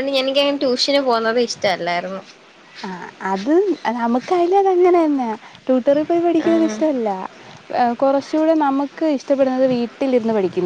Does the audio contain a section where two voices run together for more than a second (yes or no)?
no